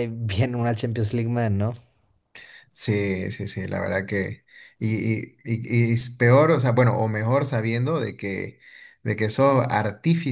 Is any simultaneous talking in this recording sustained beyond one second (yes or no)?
no